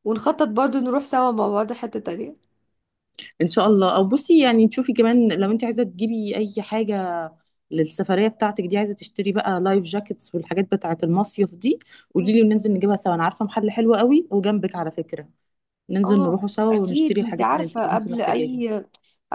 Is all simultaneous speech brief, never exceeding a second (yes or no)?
no